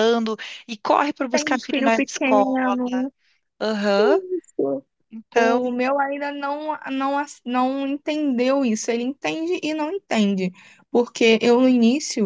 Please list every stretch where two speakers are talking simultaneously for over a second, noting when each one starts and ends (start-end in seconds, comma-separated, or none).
1.3-2.8